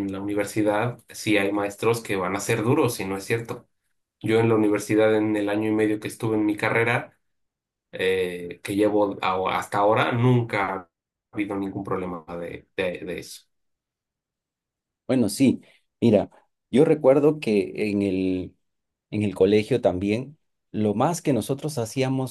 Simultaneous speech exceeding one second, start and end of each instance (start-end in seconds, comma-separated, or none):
none